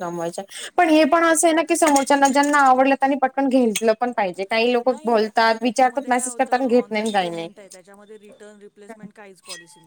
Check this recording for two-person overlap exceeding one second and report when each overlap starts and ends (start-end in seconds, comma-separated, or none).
5.6-7.5